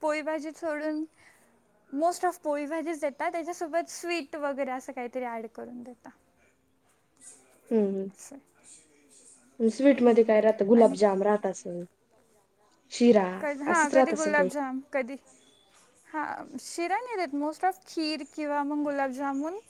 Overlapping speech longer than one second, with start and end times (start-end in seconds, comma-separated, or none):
none